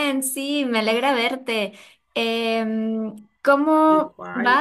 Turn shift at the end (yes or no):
no